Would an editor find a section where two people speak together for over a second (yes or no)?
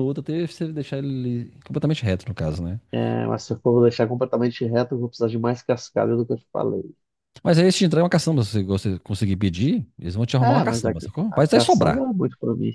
yes